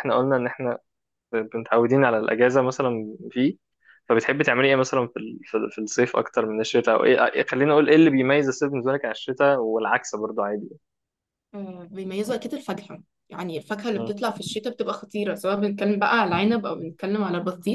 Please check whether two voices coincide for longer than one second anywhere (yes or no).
no